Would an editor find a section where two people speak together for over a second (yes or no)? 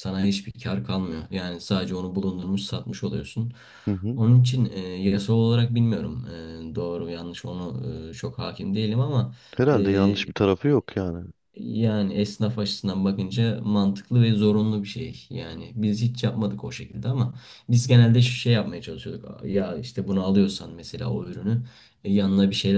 no